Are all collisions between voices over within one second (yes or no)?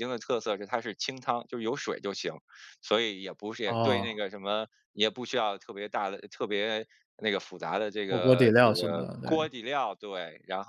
no